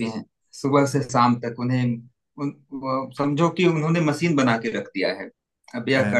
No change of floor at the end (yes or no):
yes